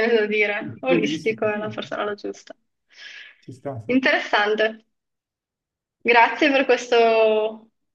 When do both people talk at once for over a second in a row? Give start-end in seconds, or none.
0.6-2.4